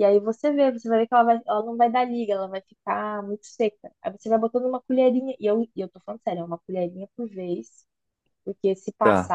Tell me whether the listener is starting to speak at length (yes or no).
no